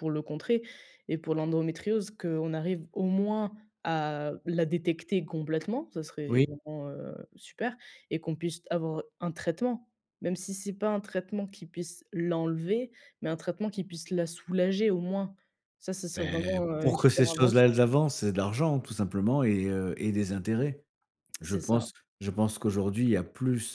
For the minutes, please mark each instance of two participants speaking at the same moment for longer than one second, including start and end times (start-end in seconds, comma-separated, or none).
16.1-17.7